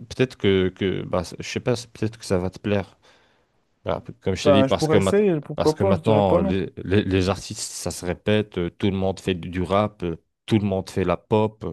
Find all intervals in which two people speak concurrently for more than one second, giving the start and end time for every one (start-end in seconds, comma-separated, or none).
4.4-6.6